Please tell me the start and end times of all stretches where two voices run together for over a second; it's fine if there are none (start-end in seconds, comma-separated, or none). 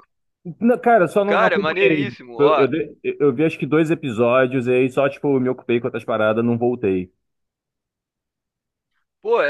1.2-2.7